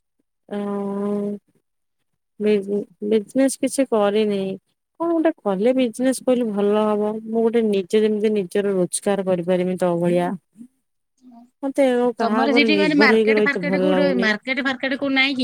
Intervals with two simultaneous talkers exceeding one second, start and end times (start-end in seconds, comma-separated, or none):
12.2-14.3